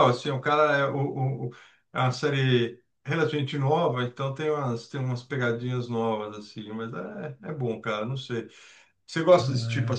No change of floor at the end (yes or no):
yes